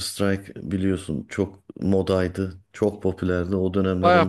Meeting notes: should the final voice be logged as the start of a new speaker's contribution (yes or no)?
yes